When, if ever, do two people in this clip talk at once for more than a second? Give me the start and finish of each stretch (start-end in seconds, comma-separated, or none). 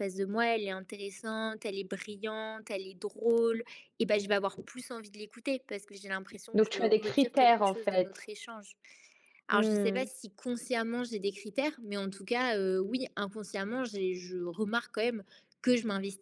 6.5-8.3